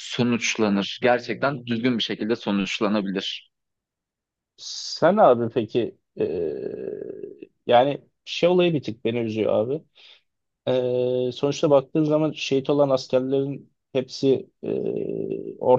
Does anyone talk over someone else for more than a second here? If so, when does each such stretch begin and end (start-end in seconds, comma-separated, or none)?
none